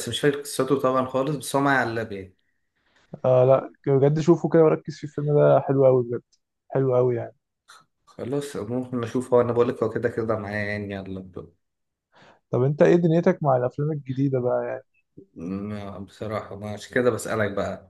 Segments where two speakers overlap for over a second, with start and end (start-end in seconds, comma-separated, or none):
none